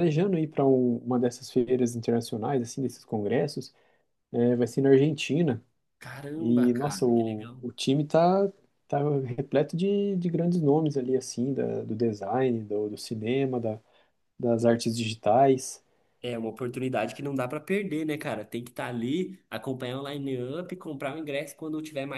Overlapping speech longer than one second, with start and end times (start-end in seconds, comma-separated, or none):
6.4-7.6